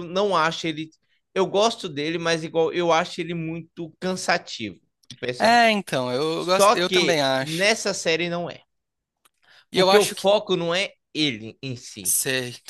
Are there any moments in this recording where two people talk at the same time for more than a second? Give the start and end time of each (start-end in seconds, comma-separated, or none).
6.3-7.7